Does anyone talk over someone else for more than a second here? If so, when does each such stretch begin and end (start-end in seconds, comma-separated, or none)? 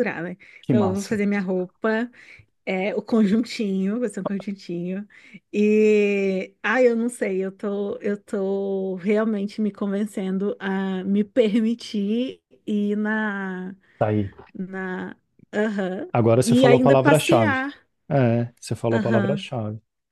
16.1-17.6